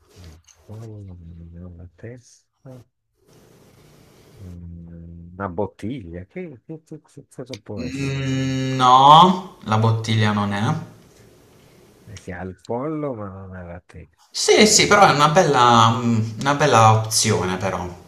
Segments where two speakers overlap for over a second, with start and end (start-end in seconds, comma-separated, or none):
none